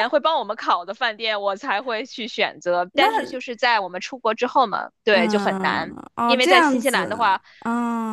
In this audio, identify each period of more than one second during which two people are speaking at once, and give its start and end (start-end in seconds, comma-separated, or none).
5.1-7.2